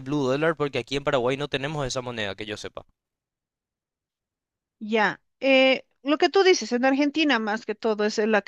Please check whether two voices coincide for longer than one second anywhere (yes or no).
no